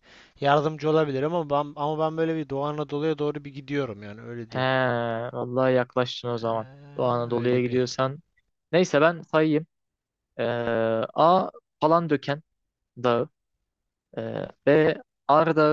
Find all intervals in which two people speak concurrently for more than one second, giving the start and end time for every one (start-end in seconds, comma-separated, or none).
6.4-7.8